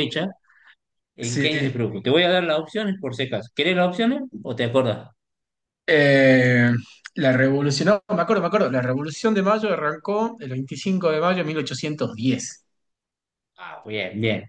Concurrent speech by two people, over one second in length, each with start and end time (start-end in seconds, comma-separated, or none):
none